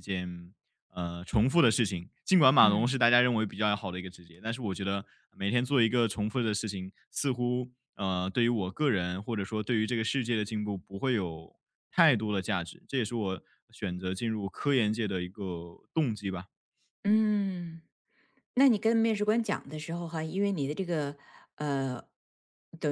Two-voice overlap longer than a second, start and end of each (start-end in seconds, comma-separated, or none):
none